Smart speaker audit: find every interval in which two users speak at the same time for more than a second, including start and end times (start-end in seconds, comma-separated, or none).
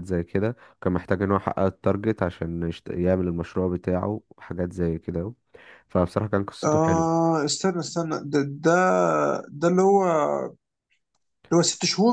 none